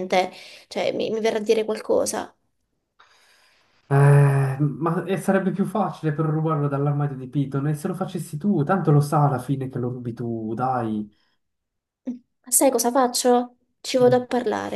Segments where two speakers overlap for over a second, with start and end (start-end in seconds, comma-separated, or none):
none